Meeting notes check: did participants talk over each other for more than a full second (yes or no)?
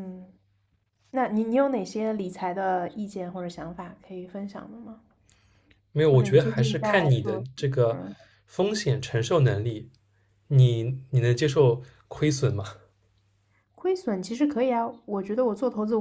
yes